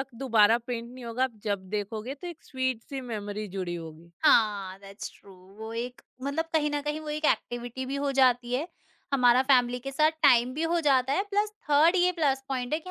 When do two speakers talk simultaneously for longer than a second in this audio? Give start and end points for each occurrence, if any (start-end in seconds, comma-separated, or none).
none